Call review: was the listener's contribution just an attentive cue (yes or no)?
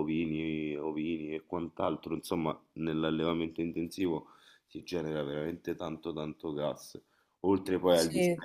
yes